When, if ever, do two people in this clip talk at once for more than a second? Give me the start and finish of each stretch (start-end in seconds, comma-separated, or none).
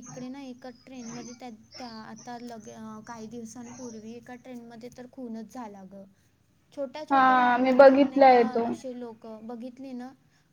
7.1-8.6